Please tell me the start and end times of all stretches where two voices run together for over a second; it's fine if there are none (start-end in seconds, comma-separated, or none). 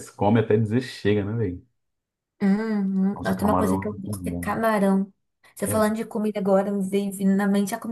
3.2-4.6